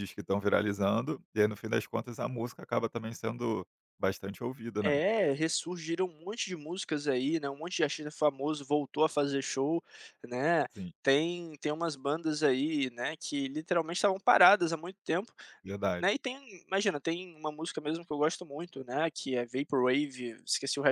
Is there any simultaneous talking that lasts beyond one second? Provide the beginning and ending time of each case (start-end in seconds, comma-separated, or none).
none